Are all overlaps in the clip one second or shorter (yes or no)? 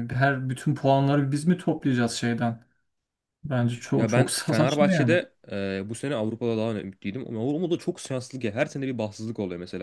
no